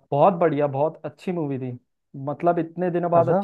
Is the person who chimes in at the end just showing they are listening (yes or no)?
yes